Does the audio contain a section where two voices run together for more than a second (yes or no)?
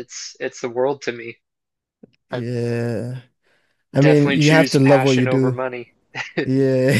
yes